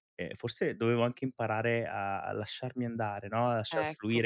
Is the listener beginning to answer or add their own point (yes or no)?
no